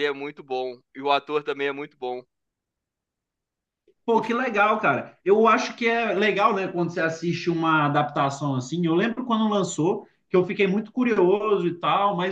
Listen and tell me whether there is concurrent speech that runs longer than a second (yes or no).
no